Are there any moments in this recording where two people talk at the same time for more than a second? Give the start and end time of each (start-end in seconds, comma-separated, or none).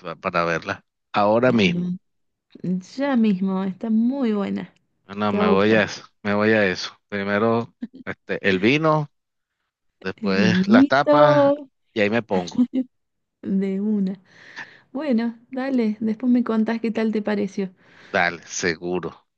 10.2-11.5